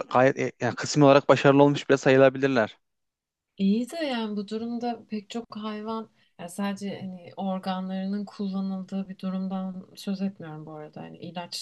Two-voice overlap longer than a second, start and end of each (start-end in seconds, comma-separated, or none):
none